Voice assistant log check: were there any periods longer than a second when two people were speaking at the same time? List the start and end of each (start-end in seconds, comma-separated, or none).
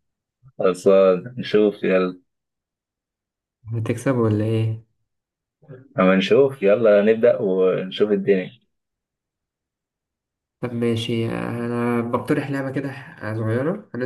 none